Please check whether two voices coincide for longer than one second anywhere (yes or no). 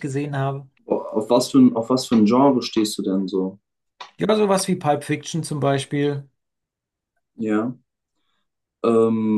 no